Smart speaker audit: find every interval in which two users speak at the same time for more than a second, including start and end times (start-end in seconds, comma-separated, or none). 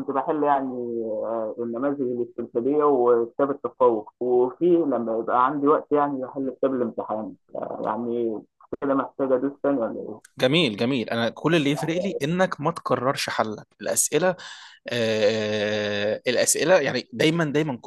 none